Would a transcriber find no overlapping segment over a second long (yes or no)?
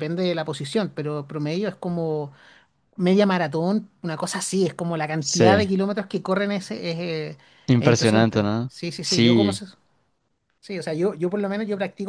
no